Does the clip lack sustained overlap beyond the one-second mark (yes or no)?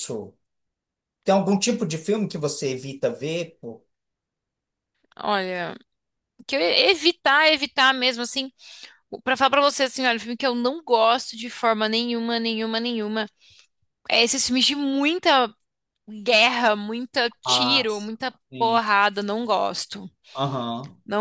no